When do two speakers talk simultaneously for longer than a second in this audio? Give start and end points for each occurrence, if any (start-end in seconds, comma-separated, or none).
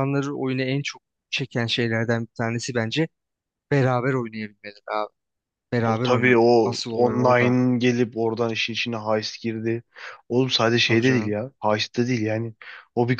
5.8-7.5